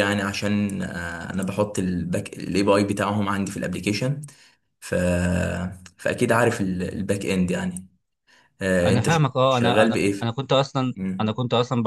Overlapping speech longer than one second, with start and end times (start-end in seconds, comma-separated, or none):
8.8-10.3